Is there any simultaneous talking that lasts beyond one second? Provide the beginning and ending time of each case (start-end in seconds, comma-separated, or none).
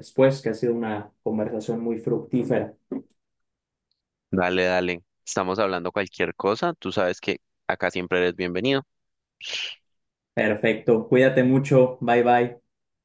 none